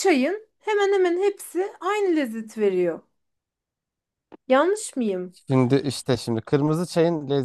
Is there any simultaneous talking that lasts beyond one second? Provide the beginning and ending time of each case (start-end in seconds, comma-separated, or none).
none